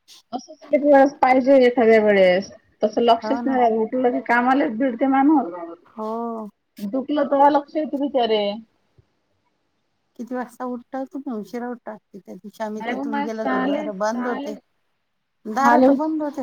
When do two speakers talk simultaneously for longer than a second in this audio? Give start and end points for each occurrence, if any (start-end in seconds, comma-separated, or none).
12.8-14.5